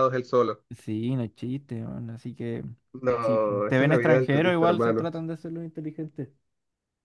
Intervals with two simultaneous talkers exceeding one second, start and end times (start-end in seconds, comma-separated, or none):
3.2-5.1